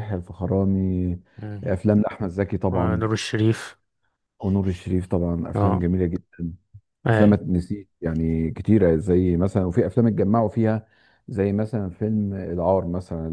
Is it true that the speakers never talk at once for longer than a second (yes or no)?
yes